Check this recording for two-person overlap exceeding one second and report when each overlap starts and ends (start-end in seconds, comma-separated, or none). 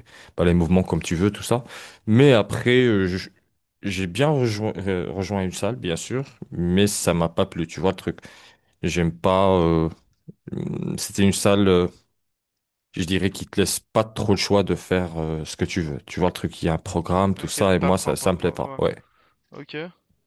17.4-18.8